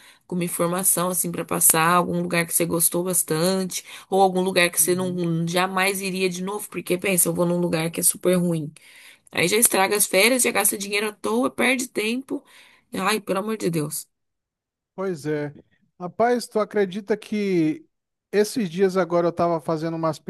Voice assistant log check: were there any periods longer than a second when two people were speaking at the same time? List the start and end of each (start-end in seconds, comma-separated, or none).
none